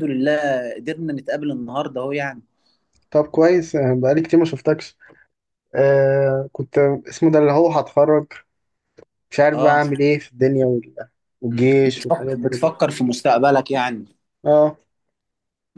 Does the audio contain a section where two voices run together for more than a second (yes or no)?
yes